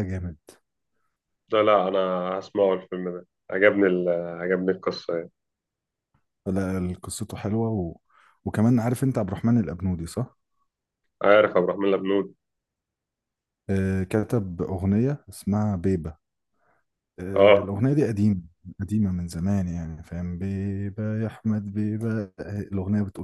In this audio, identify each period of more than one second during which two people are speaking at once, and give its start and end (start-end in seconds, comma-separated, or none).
none